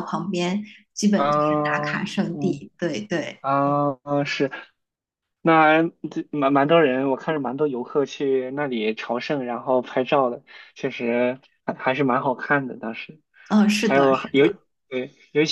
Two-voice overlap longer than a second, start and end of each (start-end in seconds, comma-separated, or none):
1.1-2.7